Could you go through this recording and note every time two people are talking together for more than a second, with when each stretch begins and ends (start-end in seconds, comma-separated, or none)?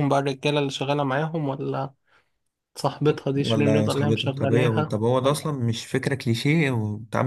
3.4-5.4